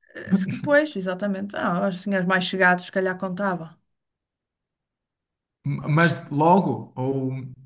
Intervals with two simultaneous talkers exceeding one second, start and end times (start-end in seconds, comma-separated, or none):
none